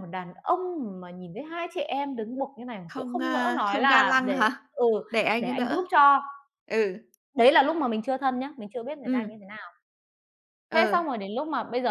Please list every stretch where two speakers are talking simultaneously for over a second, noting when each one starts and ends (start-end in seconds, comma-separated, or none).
2.9-4.4